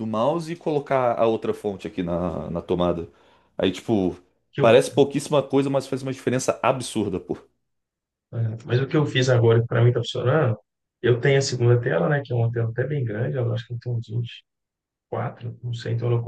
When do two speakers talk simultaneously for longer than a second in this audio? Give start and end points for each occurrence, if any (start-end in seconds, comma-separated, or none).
none